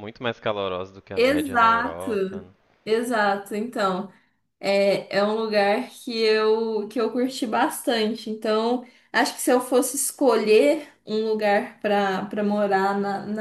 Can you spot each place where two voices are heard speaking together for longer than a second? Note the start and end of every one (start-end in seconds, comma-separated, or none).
1.1-2.4